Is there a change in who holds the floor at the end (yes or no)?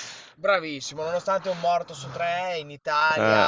no